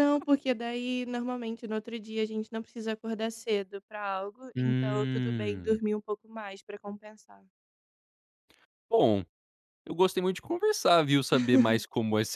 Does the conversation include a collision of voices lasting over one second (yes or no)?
yes